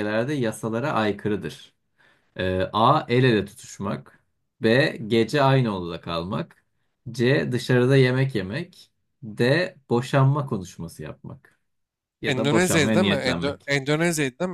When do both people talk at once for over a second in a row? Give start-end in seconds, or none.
12.2-13.7